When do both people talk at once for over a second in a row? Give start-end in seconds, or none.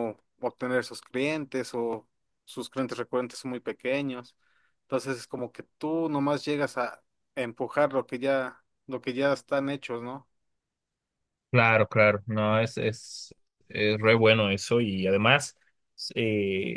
none